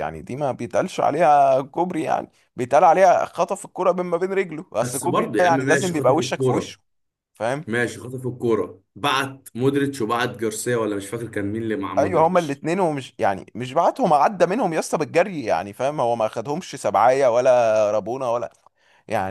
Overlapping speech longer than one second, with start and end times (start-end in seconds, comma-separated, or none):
4.8-6.7